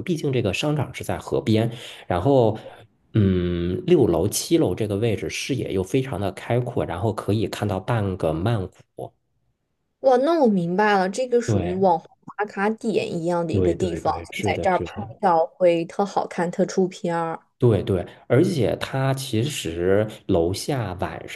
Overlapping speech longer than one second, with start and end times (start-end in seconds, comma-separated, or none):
13.5-15.2